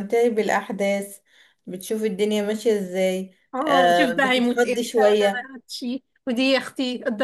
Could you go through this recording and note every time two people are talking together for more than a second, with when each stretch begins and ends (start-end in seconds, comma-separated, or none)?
3.5-5.5